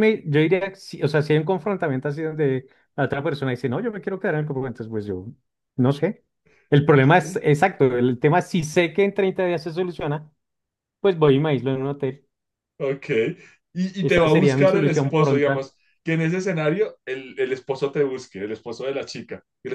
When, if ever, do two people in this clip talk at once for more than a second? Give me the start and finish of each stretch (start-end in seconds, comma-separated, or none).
14.0-15.7